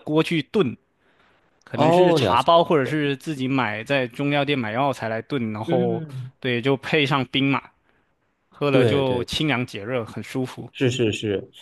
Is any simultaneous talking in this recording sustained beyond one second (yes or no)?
yes